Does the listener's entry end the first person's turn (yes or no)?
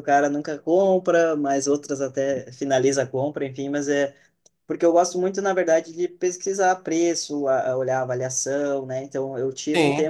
no